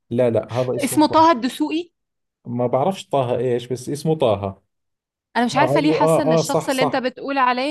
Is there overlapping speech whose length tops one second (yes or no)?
yes